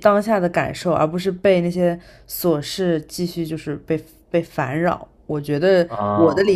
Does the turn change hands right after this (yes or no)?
no